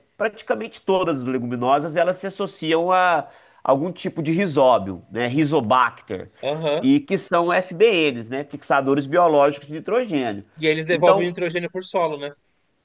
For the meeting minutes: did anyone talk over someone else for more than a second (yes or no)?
no